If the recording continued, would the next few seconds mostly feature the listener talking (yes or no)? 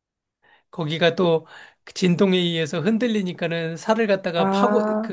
no